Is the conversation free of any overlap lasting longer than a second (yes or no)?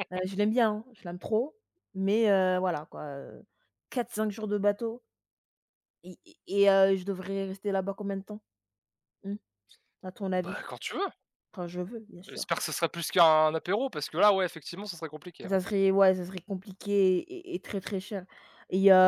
yes